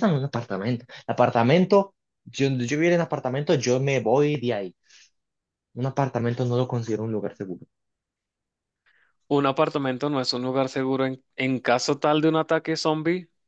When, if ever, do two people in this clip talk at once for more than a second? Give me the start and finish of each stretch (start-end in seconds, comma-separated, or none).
none